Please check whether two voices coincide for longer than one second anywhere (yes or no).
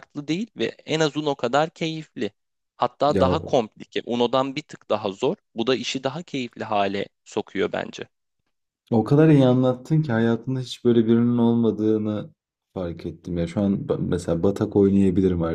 no